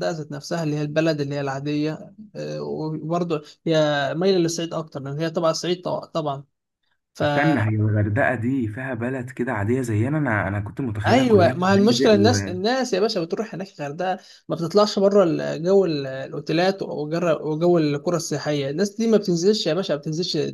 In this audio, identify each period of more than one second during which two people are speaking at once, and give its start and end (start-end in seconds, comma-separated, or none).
11.1-12.5